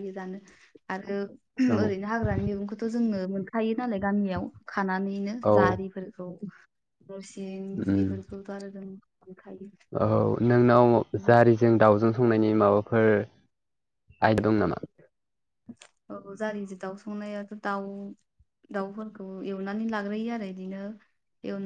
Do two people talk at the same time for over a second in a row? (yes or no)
no